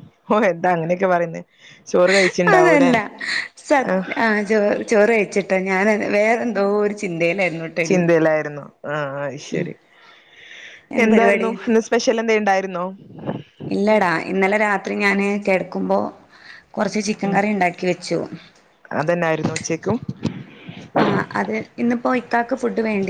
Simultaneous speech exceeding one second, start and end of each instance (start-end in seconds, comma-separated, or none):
none